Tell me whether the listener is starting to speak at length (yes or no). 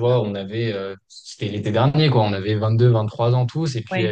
no